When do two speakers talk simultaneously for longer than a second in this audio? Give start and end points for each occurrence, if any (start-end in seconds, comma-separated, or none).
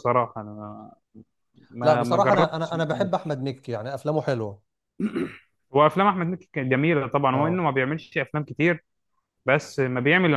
1.8-3.1